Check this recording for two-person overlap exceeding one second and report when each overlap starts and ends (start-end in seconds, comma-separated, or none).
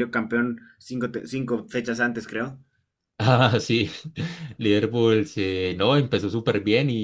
none